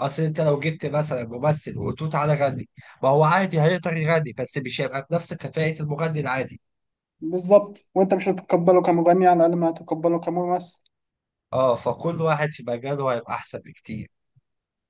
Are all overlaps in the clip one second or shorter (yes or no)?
yes